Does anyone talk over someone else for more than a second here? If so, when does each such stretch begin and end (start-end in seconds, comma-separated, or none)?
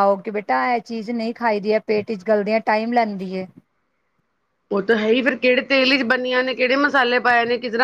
none